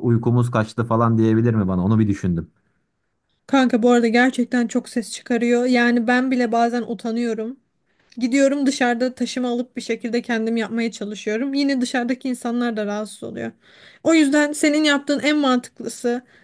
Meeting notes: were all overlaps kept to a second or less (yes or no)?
yes